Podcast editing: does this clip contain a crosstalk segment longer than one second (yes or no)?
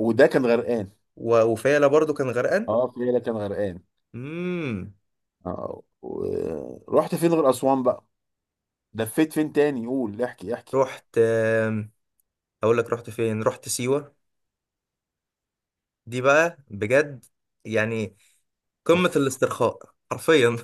no